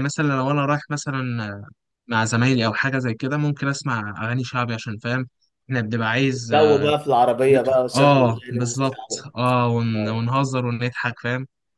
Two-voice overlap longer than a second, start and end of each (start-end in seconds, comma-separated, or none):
7.5-9.2